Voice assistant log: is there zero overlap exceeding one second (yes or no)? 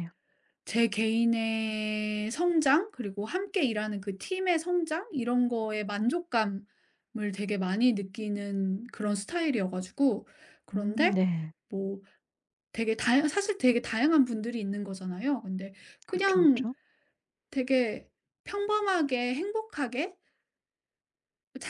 yes